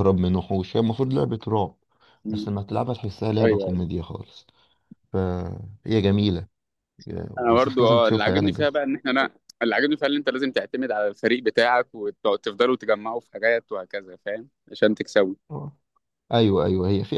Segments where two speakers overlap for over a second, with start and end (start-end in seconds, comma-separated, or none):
7.4-8.7